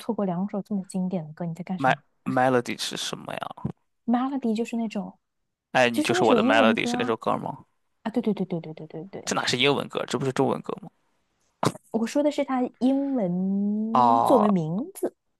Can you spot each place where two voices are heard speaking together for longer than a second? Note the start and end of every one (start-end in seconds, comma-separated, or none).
5.9-7.2